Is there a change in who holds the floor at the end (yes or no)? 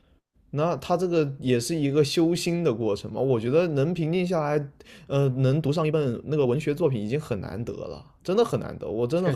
yes